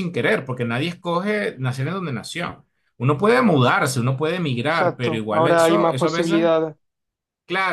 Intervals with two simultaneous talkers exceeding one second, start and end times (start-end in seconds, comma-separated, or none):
4.7-6.5